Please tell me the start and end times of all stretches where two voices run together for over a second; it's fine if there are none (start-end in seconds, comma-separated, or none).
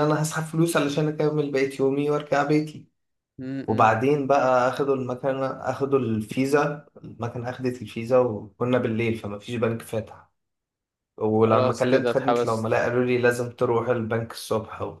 11.5-12.8